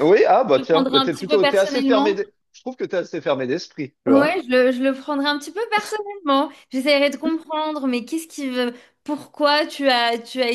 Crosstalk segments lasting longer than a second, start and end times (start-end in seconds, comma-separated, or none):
0.5-2.2